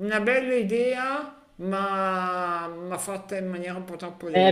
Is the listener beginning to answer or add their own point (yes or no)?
yes